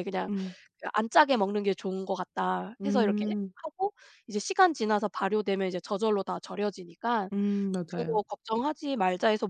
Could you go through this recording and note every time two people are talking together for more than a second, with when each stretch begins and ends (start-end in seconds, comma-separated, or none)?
none